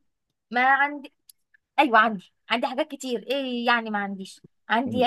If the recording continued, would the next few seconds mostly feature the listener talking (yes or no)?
no